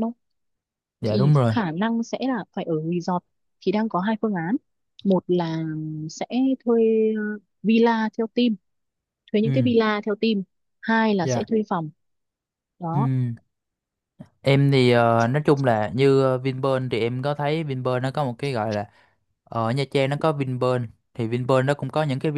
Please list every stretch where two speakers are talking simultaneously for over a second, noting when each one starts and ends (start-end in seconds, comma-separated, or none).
none